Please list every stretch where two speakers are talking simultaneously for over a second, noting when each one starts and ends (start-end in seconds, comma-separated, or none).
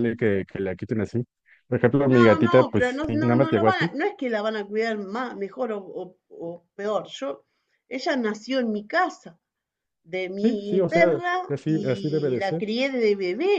2.1-3.9, 10.4-12.6